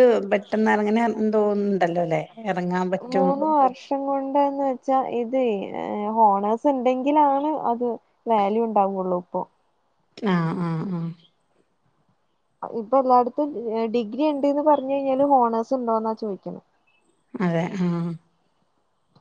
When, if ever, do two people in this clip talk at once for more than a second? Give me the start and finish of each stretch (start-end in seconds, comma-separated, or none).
none